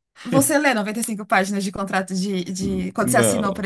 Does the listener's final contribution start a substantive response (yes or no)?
yes